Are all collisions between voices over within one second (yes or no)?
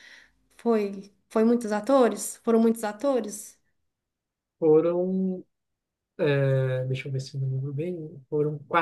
yes